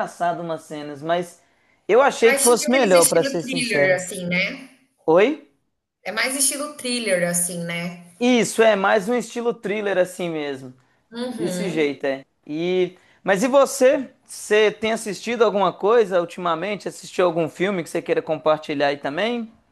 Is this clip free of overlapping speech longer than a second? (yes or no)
no